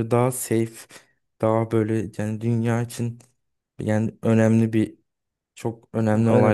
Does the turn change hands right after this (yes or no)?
no